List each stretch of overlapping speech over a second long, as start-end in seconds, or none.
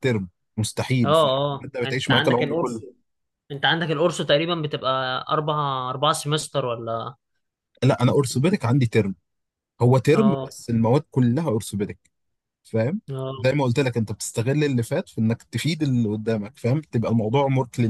1.0-2.8